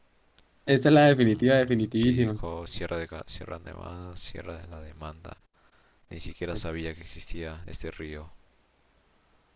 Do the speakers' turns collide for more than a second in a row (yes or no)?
yes